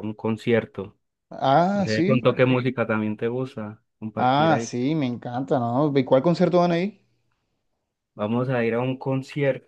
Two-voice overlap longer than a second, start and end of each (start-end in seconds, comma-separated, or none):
none